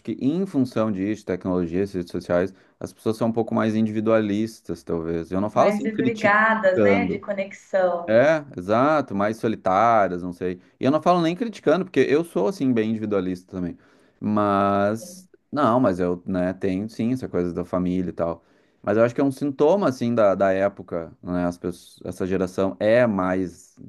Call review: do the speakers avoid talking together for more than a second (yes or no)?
no